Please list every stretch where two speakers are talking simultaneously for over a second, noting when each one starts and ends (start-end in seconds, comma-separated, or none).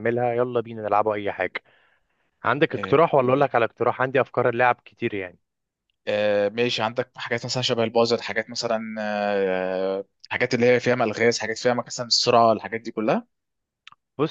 none